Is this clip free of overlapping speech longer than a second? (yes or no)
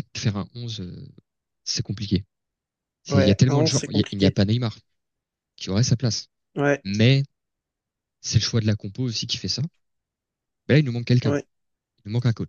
no